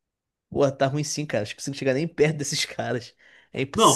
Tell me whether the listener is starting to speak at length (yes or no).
yes